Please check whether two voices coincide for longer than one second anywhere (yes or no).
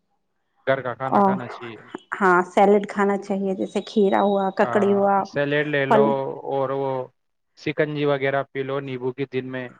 no